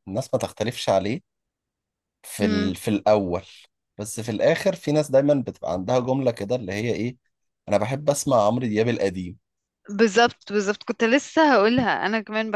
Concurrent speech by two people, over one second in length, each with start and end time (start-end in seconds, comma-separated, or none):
none